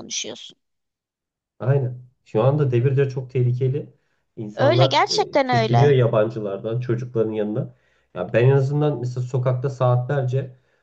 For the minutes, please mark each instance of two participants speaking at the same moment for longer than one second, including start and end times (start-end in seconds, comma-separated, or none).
4.5-5.9